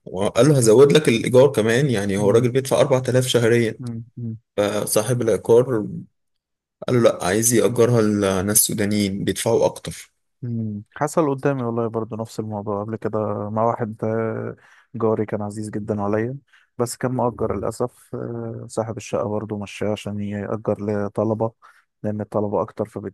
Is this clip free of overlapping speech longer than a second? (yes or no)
yes